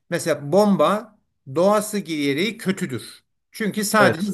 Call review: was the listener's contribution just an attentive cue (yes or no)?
yes